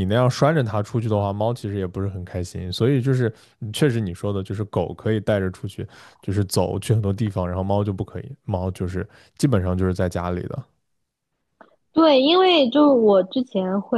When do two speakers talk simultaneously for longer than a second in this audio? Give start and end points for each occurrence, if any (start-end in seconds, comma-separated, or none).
none